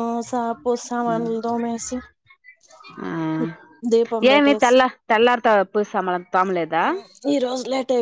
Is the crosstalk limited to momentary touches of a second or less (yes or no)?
yes